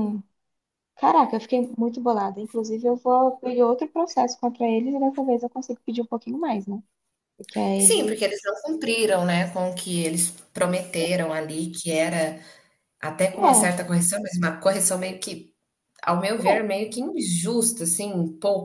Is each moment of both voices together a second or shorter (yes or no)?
yes